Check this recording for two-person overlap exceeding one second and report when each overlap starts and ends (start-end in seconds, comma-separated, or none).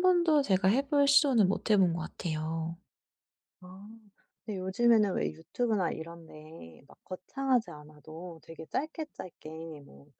none